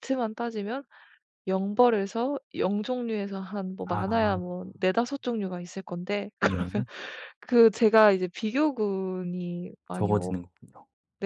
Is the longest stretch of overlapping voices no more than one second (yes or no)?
yes